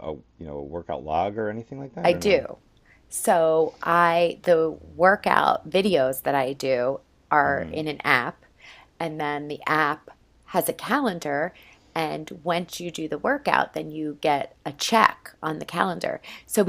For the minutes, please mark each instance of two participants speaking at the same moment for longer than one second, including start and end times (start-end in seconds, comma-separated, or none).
none